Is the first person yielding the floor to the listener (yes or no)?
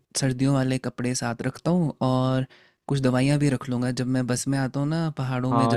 yes